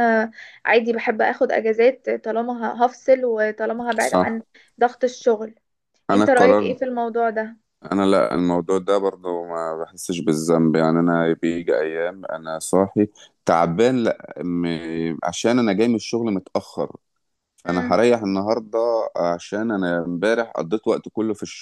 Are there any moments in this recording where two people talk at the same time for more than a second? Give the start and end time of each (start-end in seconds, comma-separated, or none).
none